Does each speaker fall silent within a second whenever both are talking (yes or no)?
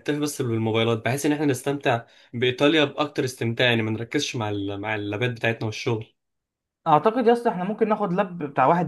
yes